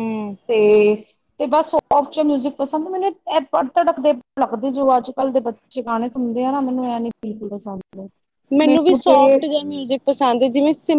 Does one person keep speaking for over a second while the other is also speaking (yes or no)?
no